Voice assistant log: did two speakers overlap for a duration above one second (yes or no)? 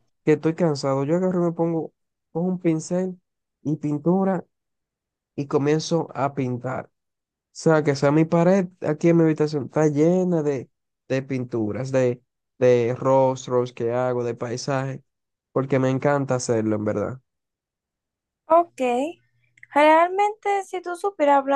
no